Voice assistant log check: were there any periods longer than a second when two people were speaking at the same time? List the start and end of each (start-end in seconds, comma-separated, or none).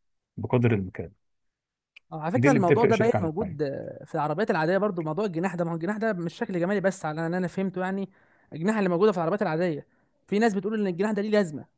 2.4-3.7